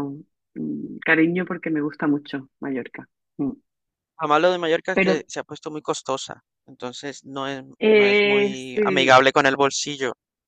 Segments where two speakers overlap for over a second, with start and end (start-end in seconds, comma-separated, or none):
7.8-9.2